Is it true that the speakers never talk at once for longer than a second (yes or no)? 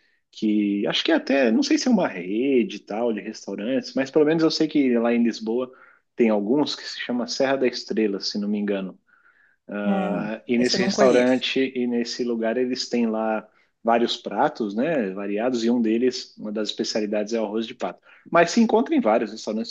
no